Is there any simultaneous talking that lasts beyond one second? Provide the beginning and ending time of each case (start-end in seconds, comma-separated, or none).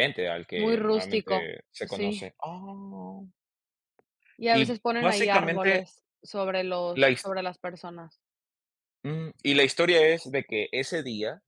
0.5-2.3, 4.5-5.8